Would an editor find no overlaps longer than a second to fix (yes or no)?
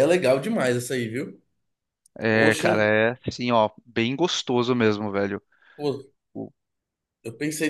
yes